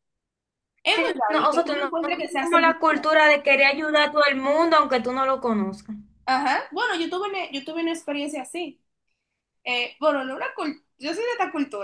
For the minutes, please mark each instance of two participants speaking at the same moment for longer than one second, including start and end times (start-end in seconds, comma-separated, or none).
0.9-3.0